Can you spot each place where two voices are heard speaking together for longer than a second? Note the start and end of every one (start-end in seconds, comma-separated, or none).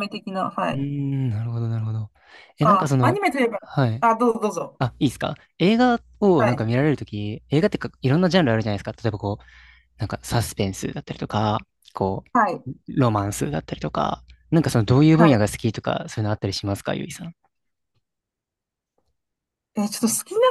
none